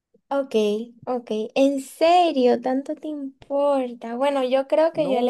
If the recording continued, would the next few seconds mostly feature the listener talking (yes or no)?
yes